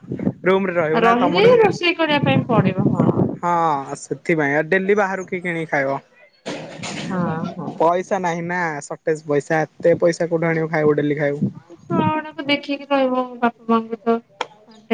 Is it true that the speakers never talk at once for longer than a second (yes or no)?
yes